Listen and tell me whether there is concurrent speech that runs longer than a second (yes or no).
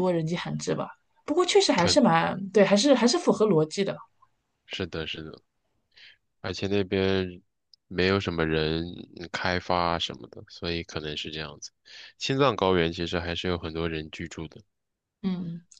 no